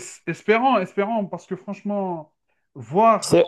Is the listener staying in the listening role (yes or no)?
yes